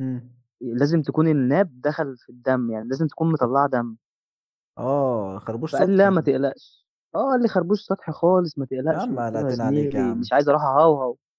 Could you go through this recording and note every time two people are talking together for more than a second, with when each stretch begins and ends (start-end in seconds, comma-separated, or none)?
8.9-10.3